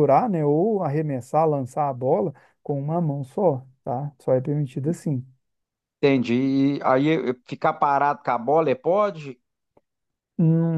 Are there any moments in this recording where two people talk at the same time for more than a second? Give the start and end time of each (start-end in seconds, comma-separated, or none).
none